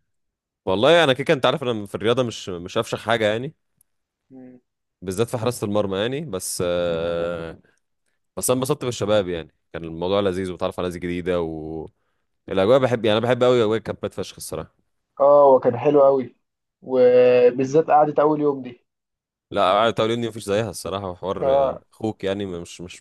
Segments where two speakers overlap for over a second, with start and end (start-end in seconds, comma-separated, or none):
none